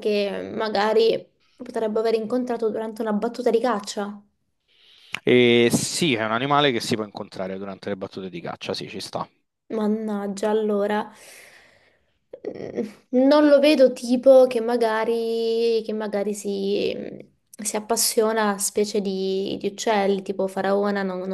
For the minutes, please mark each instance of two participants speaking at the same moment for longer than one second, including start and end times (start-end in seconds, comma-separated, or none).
none